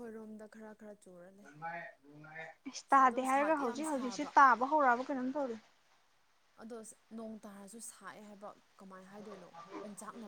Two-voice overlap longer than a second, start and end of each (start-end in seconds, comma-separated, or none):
3.0-4.3